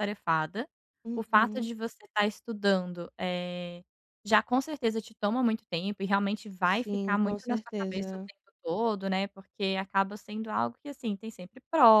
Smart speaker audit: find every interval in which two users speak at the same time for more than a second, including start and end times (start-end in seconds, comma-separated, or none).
6.7-8.3